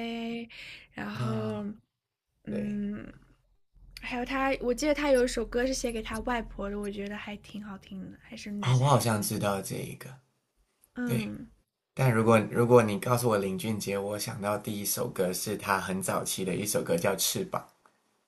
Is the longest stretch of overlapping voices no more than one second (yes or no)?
yes